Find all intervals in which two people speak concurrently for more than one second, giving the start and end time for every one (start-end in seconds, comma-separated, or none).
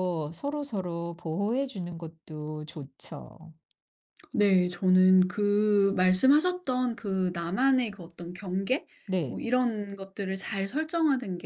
none